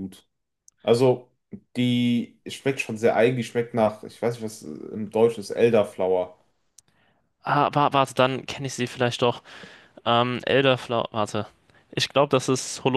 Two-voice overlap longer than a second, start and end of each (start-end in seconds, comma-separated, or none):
none